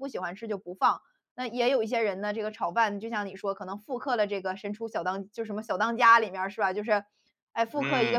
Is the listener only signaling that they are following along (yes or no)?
yes